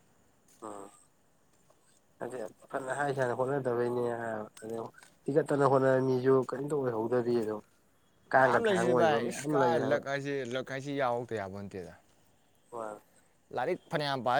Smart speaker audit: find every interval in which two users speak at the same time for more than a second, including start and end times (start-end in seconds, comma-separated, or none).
8.3-10.0